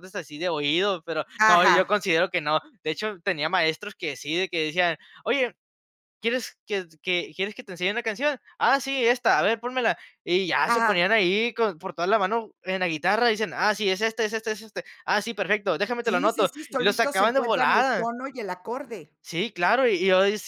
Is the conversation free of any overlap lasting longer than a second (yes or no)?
no